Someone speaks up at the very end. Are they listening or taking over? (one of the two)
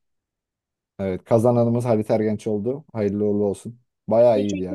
taking over